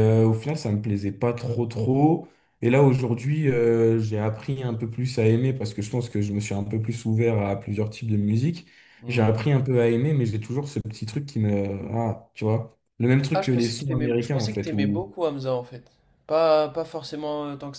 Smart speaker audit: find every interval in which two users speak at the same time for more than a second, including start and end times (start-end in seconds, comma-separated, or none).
13.3-15.1